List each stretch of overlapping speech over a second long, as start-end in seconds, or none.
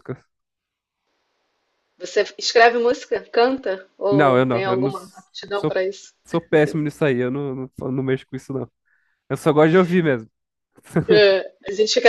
4.1-5.8